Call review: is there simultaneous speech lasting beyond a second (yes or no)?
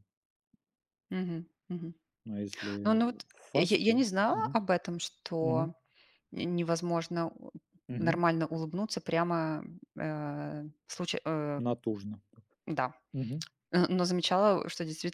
yes